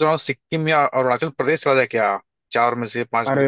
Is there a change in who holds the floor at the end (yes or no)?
yes